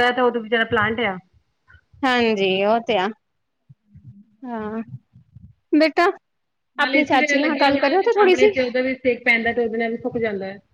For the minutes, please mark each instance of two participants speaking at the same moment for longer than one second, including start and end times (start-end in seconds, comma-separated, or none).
6.8-8.5